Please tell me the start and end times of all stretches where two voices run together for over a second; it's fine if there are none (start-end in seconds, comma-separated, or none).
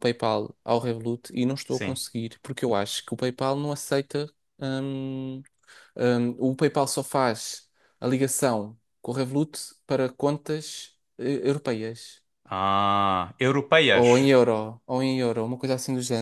none